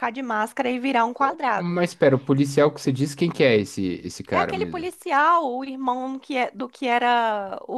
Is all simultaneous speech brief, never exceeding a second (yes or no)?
yes